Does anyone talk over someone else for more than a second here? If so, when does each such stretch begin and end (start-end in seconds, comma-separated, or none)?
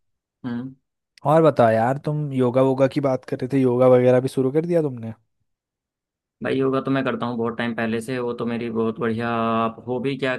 none